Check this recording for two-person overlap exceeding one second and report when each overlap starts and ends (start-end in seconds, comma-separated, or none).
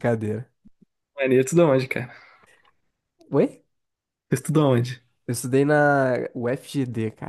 none